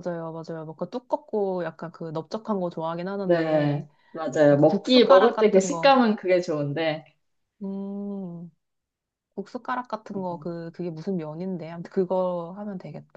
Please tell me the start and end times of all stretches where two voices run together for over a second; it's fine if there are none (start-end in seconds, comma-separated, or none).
4.5-6.0